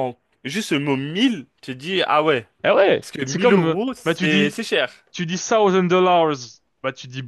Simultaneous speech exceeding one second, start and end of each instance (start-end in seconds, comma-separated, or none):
3.0-4.6